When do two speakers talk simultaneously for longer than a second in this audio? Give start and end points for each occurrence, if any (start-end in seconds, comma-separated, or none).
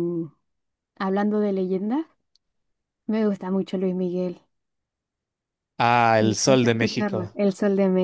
6.2-7.4